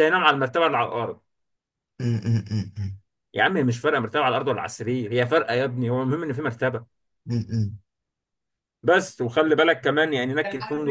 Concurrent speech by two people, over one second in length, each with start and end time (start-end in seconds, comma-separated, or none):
none